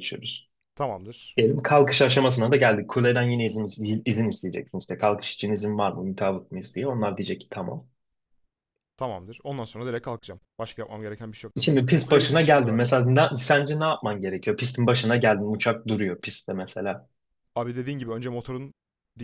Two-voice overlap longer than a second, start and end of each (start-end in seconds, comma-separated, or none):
11.6-12.9